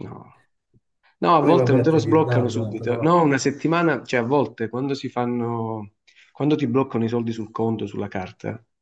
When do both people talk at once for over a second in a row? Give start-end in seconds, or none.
1.4-3.1